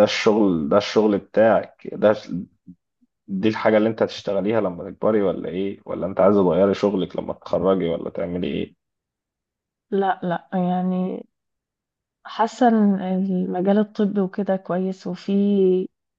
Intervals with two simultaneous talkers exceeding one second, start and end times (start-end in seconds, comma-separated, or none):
none